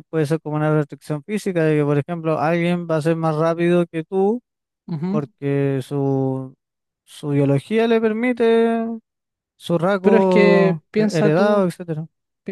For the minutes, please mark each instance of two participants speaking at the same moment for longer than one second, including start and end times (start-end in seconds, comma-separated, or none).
10.0-11.7